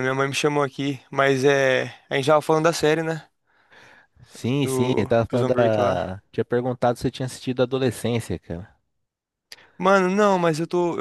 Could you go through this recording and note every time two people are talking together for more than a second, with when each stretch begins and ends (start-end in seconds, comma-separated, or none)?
4.6-6.1